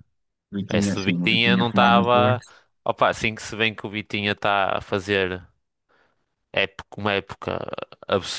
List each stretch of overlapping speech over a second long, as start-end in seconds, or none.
0.7-2.4